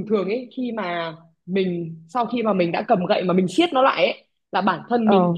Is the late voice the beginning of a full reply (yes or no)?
no